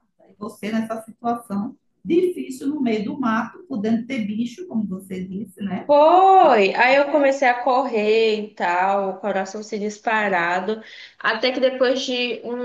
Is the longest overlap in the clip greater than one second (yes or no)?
no